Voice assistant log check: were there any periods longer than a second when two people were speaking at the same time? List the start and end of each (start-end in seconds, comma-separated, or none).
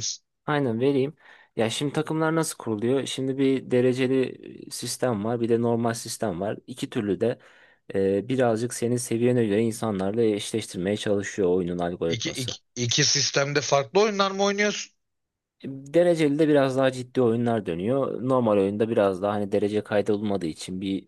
none